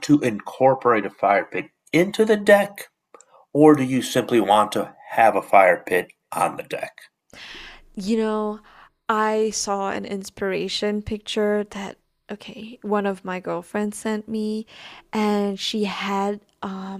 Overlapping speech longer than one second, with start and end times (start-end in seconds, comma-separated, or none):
none